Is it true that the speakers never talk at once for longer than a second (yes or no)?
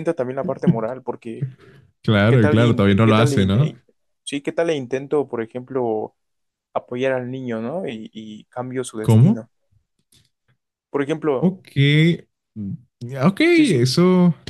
no